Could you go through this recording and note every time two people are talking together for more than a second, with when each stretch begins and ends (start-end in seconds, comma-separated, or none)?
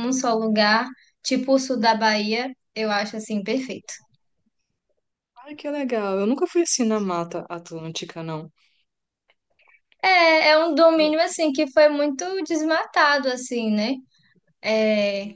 none